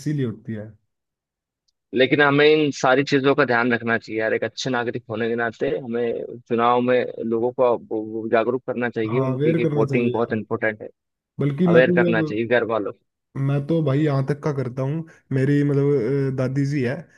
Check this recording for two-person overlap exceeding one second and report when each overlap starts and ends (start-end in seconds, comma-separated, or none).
9.1-10.3